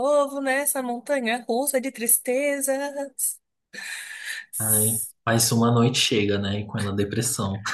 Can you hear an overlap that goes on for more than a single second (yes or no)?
no